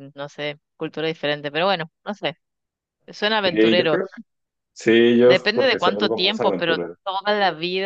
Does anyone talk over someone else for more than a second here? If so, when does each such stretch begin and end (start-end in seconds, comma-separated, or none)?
5.2-7.0